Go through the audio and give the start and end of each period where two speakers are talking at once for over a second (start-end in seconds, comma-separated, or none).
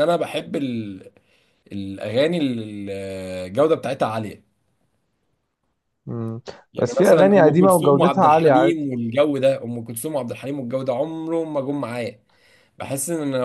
6.8-8.9